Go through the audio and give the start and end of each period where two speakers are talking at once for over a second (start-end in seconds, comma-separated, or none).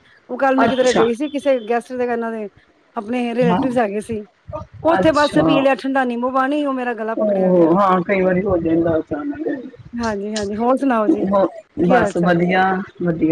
none